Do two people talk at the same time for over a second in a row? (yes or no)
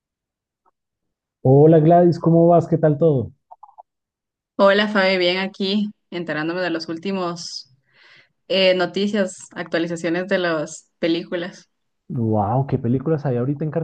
no